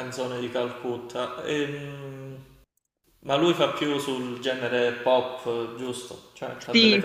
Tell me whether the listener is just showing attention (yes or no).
no